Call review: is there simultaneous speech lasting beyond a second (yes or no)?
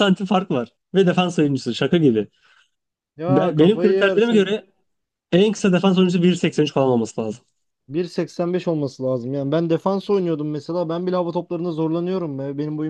yes